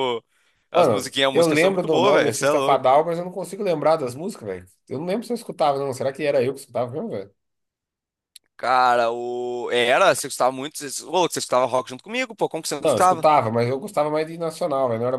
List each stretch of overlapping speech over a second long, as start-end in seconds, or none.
0.7-2.9